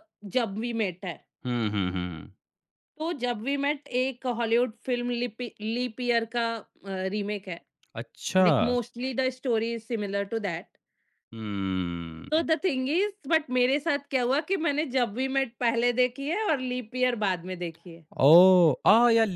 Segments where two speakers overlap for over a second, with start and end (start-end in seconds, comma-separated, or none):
none